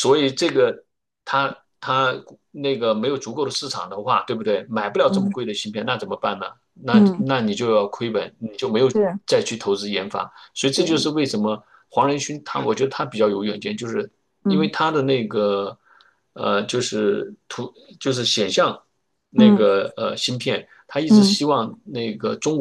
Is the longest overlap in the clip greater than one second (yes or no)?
no